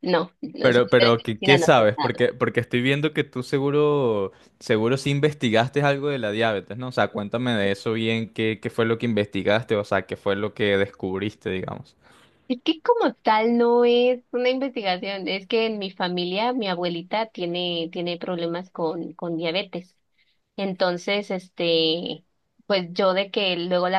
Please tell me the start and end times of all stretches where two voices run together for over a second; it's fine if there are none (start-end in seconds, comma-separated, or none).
0.6-2.2